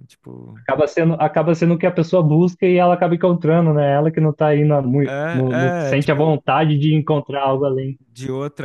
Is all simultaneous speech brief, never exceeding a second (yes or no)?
no